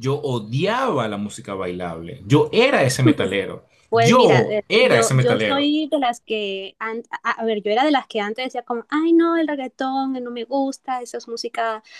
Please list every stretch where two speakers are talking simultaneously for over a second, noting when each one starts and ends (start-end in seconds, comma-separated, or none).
3.9-5.7